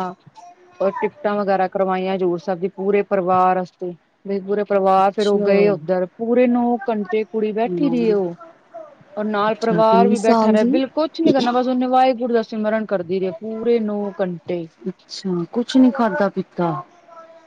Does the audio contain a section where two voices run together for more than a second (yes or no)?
yes